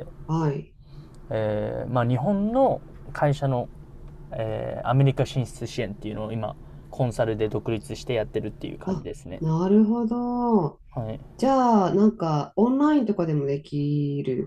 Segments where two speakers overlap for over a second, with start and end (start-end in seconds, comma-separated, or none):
none